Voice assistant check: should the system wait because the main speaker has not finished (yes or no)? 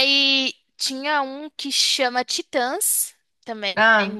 no